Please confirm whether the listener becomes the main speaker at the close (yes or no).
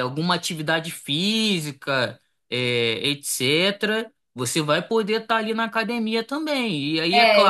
yes